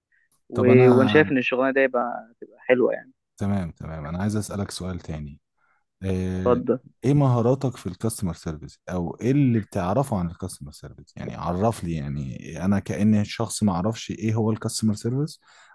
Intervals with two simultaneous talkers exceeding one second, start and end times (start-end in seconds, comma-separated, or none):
none